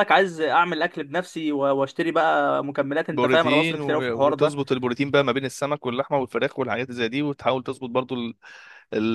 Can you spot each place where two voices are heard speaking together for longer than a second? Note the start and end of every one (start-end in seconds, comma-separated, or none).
3.1-4.6